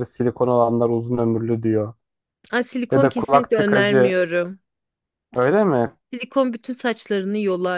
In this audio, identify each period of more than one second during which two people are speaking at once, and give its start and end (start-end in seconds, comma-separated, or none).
2.9-4.2